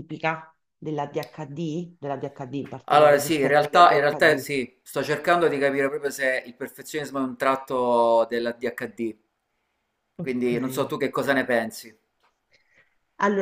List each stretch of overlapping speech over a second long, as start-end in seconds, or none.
2.9-4.5